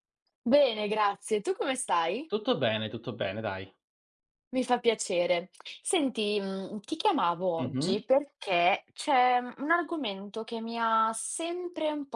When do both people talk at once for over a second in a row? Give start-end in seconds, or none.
none